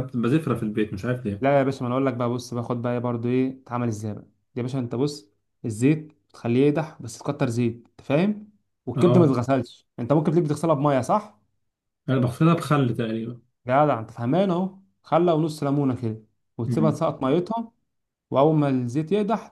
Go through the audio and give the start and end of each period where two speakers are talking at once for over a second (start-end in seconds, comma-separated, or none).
none